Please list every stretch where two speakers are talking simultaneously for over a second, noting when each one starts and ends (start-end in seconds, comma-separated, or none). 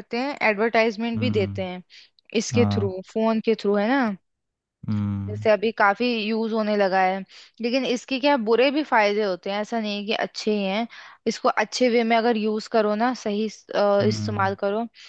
none